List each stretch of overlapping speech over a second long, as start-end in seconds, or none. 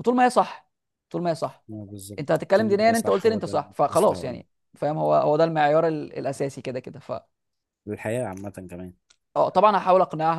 2.2-4.4